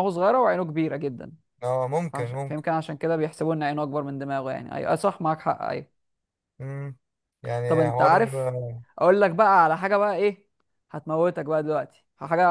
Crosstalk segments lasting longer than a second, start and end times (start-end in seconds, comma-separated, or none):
none